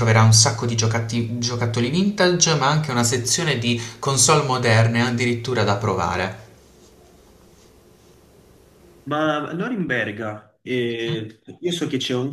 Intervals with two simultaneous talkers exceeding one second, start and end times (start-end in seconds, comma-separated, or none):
none